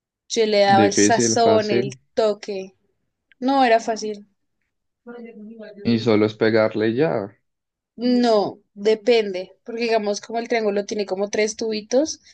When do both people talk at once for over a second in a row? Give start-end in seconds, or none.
0.7-2.0